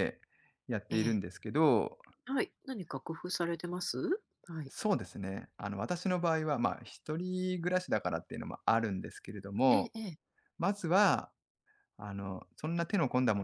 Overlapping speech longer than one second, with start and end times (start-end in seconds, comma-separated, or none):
none